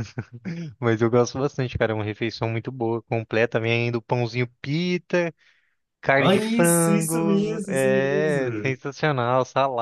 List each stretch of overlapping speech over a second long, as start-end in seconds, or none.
6.2-8.8